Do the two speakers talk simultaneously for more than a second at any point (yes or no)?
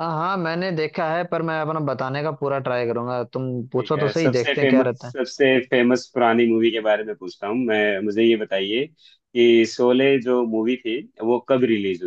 yes